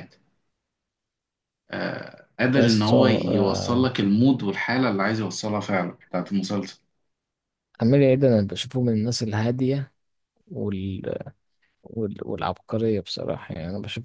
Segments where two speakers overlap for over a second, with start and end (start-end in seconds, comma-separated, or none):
2.5-3.9